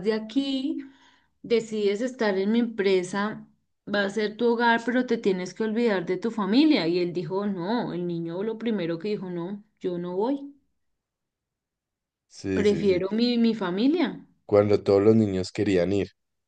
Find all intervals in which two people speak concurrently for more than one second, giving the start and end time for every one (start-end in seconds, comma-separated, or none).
none